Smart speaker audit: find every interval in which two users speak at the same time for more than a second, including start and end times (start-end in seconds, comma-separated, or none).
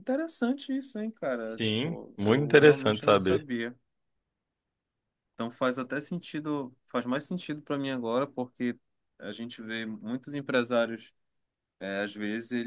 1.4-3.5